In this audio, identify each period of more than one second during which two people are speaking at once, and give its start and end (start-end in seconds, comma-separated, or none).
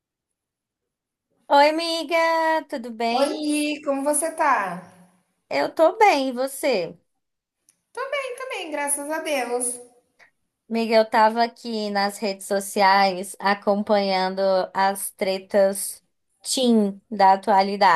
none